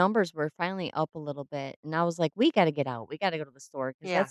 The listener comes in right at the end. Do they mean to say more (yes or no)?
no